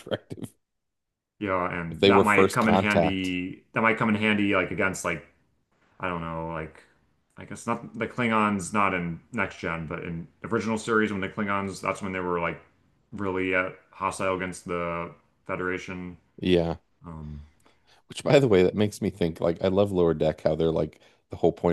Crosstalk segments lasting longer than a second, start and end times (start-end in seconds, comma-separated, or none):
1.9-3.3